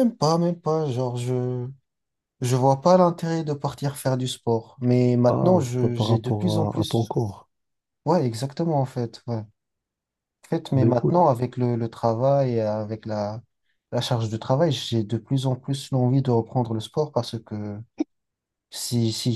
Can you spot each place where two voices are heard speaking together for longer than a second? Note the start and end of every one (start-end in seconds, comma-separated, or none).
5.3-7.1